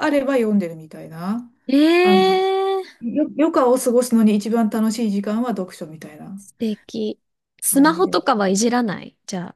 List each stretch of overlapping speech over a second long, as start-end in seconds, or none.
none